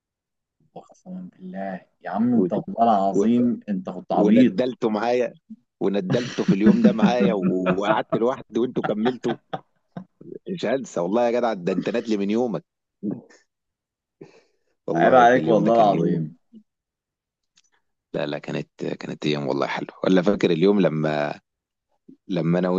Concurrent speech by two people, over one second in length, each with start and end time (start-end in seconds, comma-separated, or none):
14.9-16.3